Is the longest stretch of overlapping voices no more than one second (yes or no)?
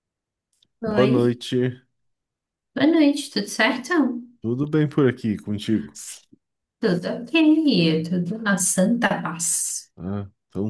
yes